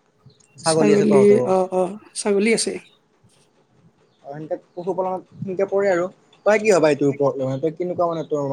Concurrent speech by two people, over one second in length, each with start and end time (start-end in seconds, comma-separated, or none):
none